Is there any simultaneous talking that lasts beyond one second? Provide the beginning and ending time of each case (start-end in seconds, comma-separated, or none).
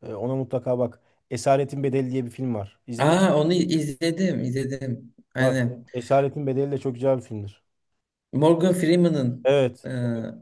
none